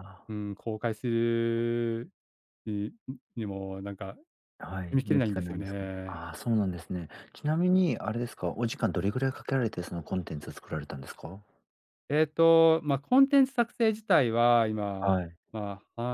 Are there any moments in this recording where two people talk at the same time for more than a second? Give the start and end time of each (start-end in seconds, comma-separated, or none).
4.9-6.3